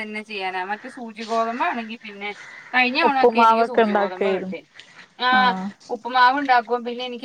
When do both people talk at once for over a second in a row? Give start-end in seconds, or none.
3.1-4.5